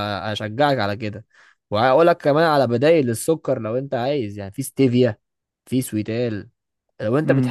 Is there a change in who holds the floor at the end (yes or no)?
no